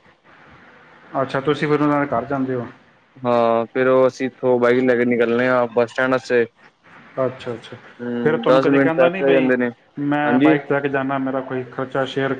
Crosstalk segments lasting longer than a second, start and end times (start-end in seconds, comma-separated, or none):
8.2-9.5